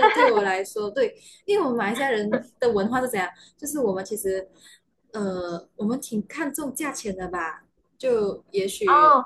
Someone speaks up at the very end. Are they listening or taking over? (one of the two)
taking over